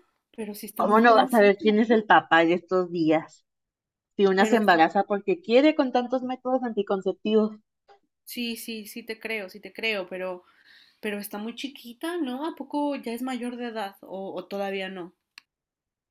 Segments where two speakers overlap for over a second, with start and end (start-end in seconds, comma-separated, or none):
0.8-2.0